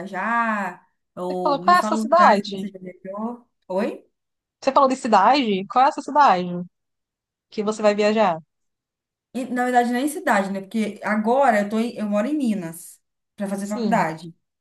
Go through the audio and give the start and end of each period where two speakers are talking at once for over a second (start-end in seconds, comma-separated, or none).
1.3-2.7